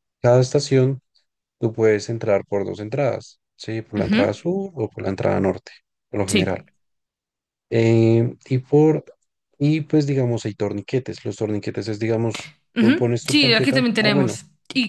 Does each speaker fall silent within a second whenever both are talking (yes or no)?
no